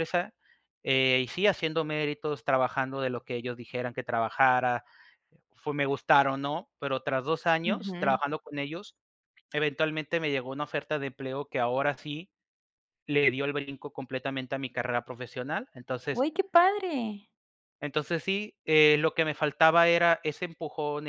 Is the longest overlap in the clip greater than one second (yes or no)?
no